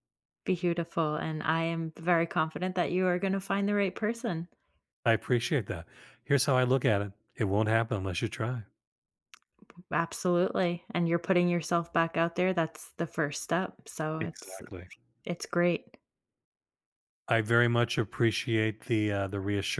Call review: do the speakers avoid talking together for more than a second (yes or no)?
yes